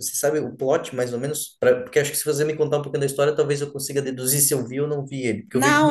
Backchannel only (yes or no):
no